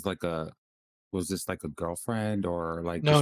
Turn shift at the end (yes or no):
yes